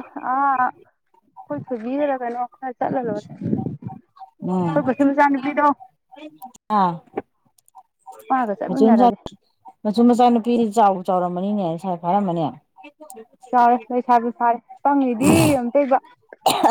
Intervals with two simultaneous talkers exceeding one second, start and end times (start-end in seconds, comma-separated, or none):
none